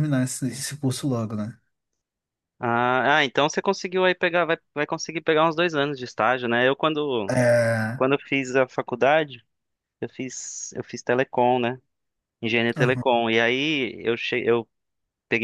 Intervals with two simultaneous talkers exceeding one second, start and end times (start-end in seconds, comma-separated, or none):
none